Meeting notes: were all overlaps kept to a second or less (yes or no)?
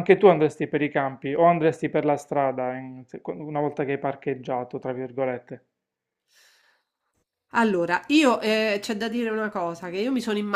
yes